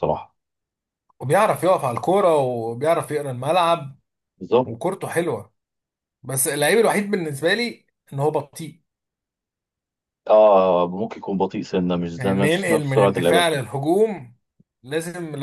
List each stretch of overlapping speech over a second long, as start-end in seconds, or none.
12.2-13.7